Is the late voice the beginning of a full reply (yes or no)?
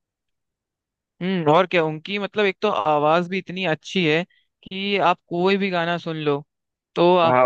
no